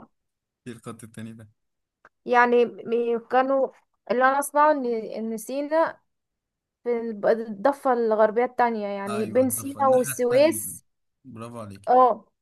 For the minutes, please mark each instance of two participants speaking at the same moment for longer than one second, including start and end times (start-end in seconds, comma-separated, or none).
9.1-10.6